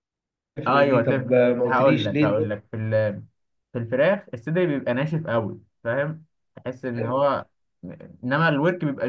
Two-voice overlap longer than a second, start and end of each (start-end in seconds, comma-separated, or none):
0.7-2.6